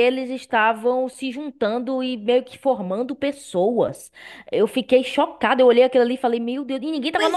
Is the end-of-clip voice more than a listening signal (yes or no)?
yes